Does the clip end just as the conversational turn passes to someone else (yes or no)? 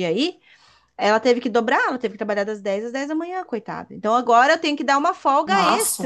no